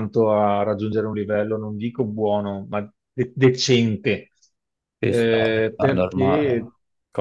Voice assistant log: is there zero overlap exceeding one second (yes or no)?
no